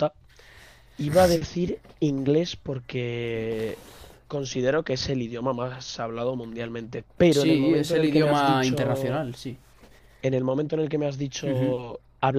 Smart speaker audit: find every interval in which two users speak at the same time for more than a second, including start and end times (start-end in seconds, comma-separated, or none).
7.3-9.2